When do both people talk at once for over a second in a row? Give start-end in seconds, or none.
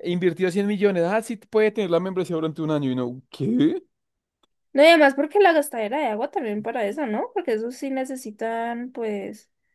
none